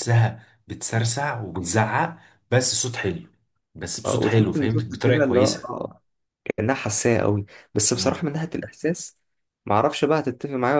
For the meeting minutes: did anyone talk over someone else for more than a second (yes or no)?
yes